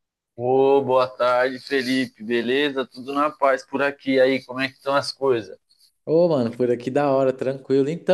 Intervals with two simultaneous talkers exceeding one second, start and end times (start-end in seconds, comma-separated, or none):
none